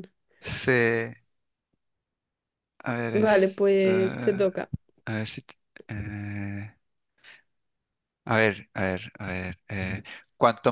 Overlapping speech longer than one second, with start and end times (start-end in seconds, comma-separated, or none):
3.1-4.5